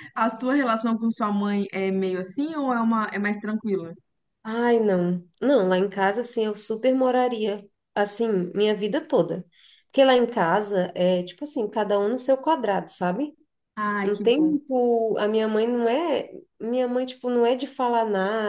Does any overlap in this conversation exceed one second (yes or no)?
no